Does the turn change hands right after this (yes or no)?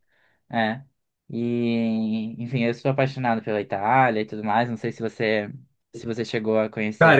yes